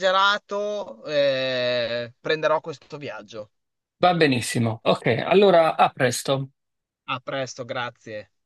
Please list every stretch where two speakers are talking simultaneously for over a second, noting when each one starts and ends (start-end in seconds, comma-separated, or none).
none